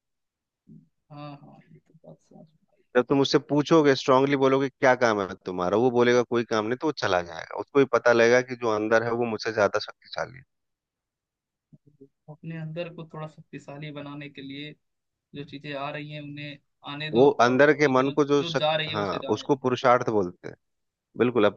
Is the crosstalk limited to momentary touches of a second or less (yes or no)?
no